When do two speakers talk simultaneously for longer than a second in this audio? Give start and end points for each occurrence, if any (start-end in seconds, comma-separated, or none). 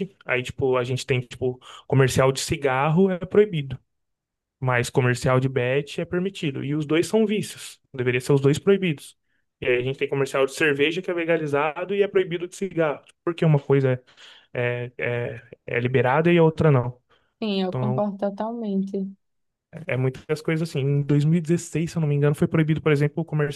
none